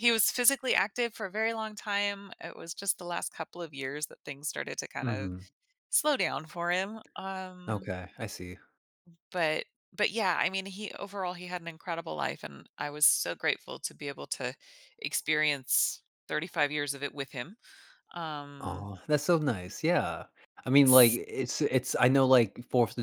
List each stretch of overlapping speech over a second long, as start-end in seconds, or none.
none